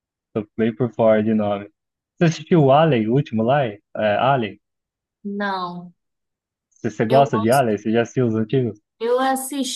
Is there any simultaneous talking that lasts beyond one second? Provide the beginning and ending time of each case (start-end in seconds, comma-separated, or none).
none